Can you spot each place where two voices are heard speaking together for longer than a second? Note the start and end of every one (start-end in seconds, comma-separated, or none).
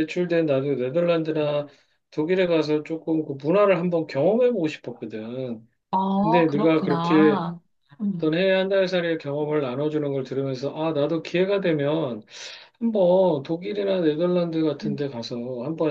6.2-7.4